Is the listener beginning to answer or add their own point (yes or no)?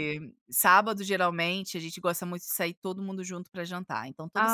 yes